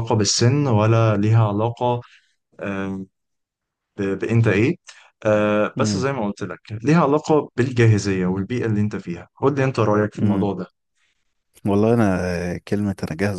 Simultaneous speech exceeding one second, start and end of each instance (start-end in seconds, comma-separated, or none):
none